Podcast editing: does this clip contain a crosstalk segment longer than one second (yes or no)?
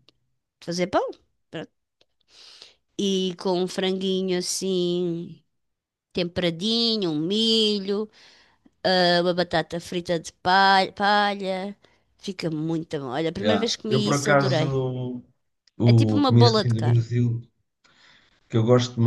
yes